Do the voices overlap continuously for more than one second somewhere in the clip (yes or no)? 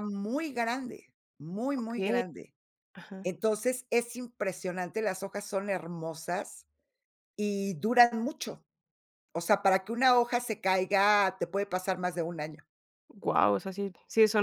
no